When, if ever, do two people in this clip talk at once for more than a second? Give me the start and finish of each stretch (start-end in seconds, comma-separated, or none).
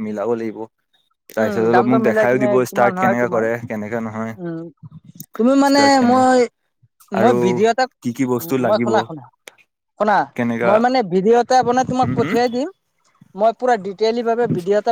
1.4-3.5